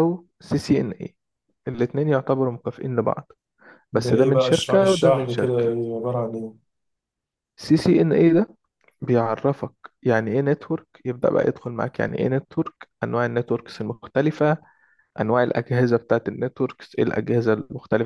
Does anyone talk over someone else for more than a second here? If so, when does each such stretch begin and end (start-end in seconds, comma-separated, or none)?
3.9-5.8